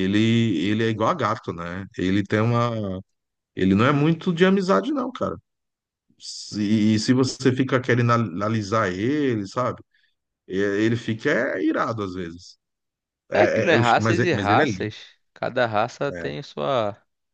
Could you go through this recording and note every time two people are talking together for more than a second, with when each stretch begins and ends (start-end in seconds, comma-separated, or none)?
13.3-14.9